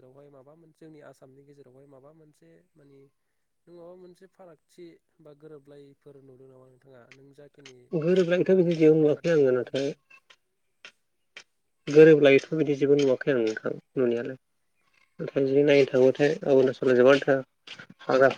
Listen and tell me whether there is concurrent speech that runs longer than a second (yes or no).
yes